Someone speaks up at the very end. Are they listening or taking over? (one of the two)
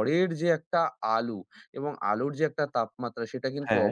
listening